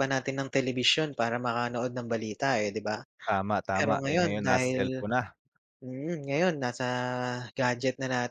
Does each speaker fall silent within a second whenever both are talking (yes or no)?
no